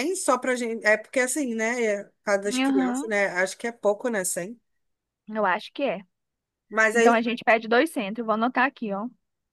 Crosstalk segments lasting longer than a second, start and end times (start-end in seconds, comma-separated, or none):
none